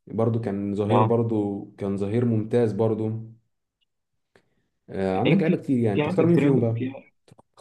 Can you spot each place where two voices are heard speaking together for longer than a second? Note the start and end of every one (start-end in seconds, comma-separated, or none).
5.1-6.8